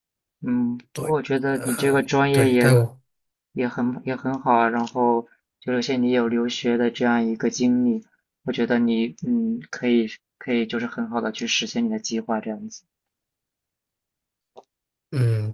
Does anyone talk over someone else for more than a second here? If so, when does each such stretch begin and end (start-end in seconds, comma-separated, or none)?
0.9-2.7